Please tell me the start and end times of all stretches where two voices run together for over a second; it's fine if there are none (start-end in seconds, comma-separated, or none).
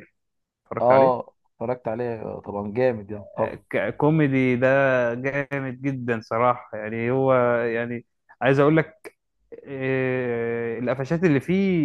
none